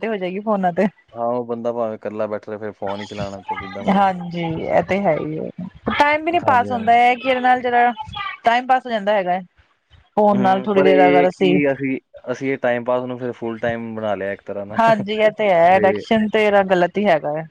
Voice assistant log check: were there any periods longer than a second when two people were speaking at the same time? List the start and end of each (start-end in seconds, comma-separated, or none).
none